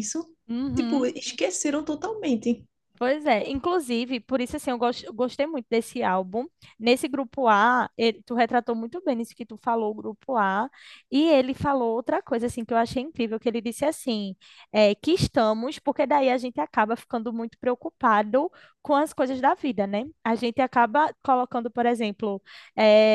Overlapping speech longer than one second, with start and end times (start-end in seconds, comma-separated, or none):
none